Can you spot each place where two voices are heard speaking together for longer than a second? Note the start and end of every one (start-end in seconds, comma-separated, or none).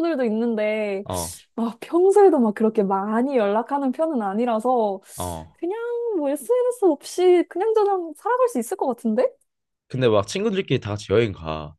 none